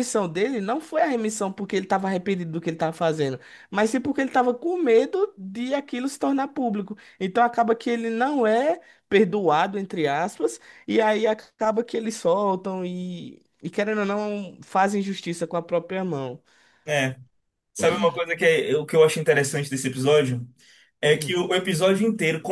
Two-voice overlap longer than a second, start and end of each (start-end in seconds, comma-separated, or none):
none